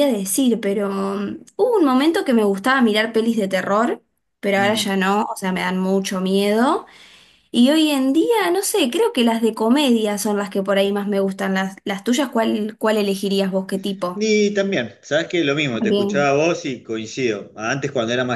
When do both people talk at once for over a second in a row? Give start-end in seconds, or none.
none